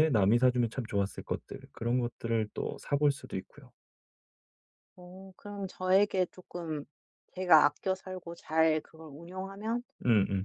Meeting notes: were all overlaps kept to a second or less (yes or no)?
yes